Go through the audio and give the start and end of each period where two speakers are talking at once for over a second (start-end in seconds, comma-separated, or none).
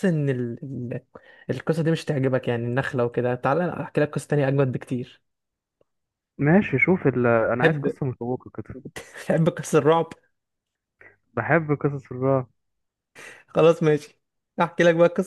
none